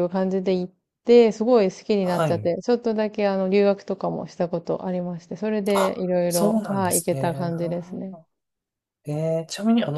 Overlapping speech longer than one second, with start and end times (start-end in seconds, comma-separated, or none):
5.7-8.2